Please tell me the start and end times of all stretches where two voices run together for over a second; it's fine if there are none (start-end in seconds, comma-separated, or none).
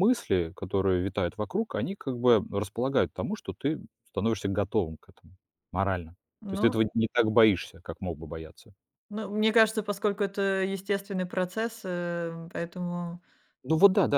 none